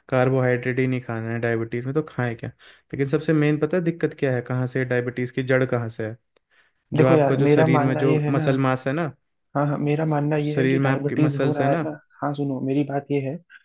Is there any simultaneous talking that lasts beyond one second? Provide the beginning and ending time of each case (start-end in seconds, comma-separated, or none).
7.0-8.5, 10.4-11.8